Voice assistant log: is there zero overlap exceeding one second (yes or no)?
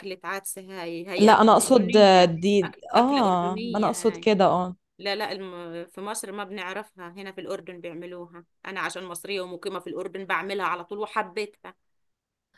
no